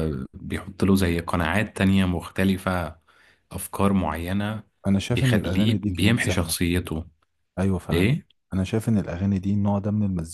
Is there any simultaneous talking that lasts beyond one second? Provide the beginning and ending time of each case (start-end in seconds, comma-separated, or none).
5.1-6.5